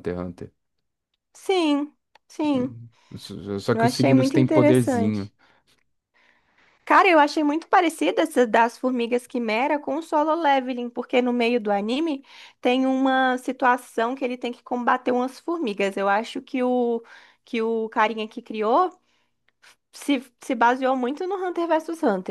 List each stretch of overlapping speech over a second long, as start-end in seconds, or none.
3.7-5.3